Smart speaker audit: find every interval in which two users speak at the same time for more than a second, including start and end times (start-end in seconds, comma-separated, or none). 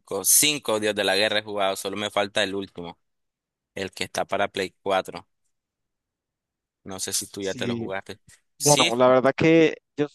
none